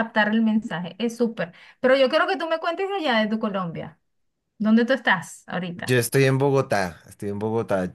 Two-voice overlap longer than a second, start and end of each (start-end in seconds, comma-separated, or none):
none